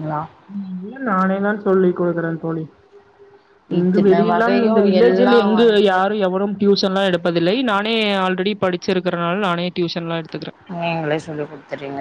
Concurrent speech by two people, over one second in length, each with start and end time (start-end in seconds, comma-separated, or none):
3.8-6.0